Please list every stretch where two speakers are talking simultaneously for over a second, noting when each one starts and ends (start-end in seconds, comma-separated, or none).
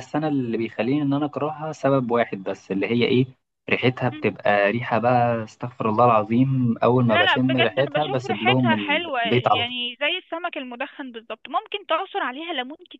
7.1-9.6